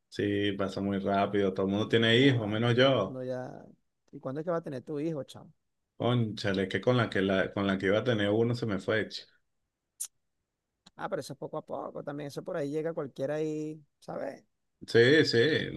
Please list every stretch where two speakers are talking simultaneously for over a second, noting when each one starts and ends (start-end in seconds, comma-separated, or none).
1.8-3.2